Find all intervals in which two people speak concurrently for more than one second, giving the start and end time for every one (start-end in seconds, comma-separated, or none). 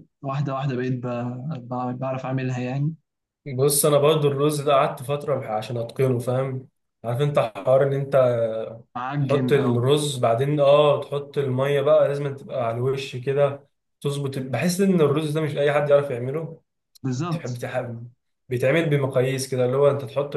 none